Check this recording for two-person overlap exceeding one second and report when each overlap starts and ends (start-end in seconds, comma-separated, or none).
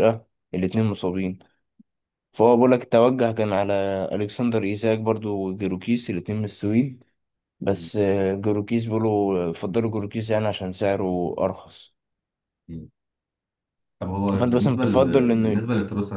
14.4-15.6